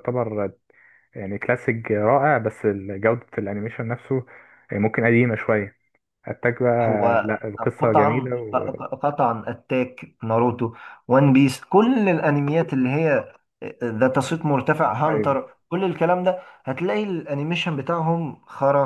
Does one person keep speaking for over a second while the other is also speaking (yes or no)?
yes